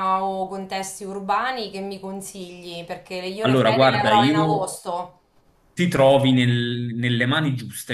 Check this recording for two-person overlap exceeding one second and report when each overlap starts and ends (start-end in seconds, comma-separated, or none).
3.4-4.7